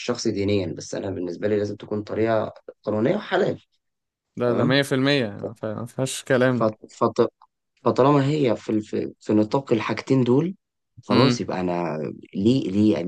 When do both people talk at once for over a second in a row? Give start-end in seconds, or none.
none